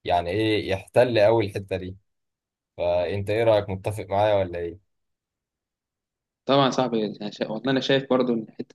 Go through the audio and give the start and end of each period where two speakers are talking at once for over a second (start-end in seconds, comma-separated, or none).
none